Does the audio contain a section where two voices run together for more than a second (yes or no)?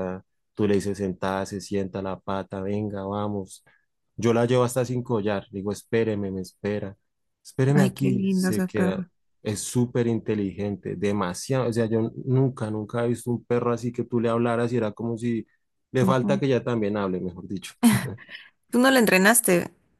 yes